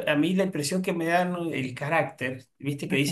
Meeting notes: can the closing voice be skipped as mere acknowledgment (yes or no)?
yes